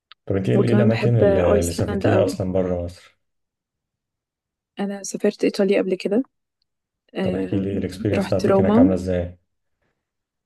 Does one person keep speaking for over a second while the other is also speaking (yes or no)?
yes